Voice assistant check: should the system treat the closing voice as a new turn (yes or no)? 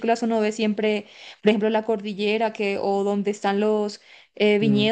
no